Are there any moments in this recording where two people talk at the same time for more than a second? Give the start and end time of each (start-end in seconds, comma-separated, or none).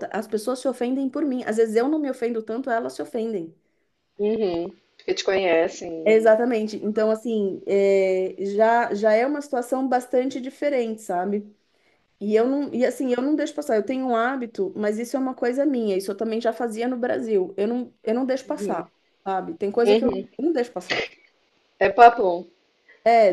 none